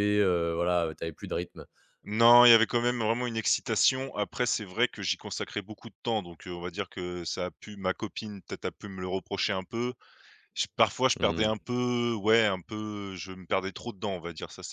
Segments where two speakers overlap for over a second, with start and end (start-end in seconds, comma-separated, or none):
none